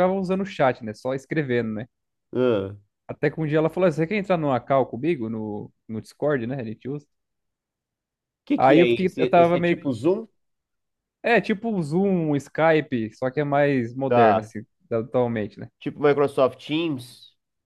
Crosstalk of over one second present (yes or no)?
yes